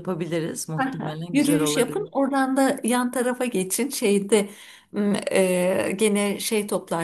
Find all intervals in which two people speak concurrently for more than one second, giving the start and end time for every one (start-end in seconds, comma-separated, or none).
0.8-2.0